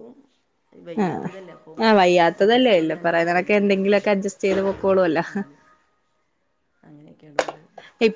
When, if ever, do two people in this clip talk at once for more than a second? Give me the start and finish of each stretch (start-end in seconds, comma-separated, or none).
2.4-4.3